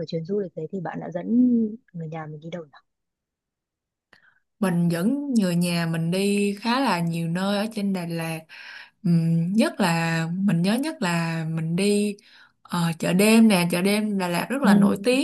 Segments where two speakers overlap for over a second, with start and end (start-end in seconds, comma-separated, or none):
none